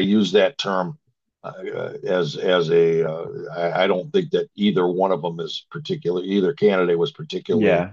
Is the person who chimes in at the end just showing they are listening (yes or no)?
no